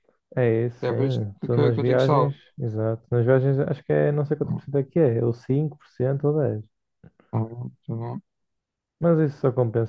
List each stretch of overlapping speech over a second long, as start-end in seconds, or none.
0.6-2.4